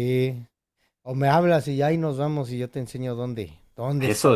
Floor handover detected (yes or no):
yes